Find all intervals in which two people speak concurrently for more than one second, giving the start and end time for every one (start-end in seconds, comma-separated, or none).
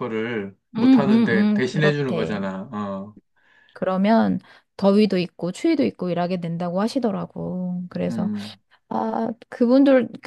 0.8-2.4